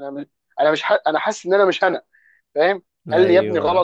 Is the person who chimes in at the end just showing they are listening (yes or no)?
yes